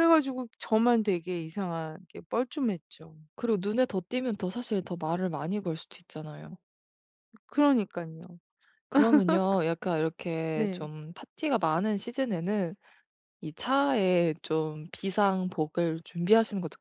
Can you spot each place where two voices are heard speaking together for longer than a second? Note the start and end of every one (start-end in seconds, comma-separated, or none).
none